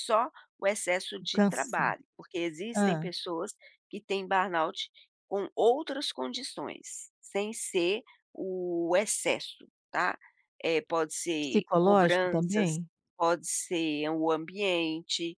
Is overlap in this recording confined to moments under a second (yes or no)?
no